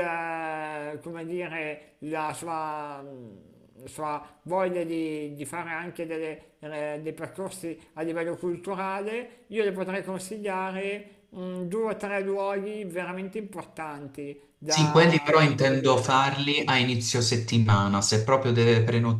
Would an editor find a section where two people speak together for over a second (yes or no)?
yes